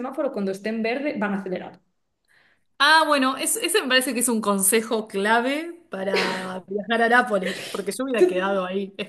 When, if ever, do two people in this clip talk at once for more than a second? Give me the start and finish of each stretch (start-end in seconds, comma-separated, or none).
none